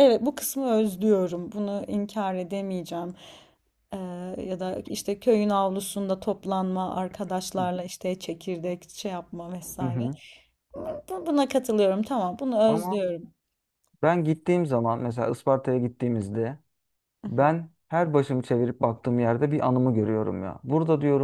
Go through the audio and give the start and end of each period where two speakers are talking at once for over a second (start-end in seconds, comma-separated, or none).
none